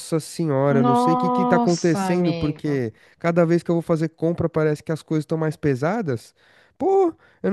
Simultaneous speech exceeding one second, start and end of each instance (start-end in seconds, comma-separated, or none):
0.7-2.8